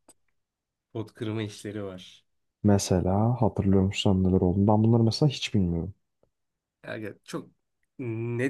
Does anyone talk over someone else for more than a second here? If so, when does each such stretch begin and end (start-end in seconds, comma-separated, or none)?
none